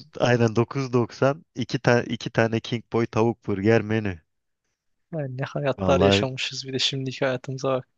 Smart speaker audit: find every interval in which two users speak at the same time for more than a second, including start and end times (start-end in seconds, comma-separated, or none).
none